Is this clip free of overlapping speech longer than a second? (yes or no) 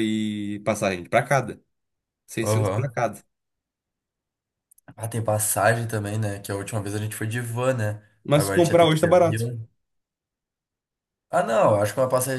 no